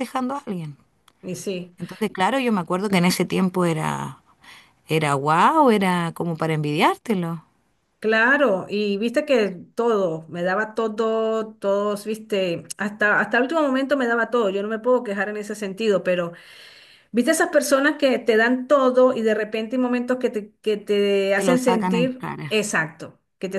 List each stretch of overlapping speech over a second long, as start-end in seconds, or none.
21.4-22.6